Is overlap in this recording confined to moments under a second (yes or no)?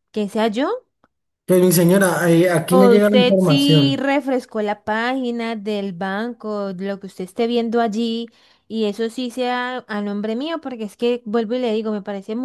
no